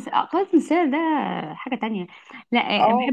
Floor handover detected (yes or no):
no